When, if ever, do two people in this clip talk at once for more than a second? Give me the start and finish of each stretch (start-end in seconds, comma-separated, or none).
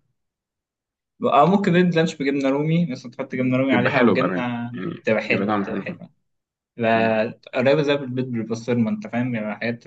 3.7-6.0